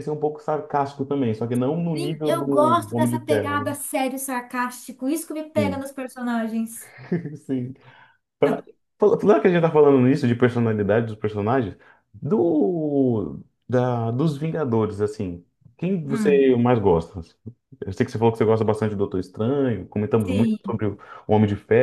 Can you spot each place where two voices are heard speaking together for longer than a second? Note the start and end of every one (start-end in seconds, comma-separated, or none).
1.9-3.8